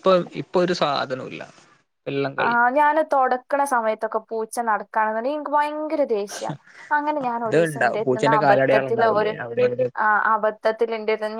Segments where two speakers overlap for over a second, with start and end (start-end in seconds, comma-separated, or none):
7.3-9.3